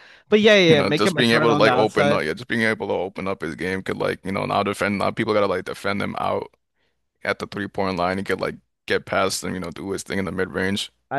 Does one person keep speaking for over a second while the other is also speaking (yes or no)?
yes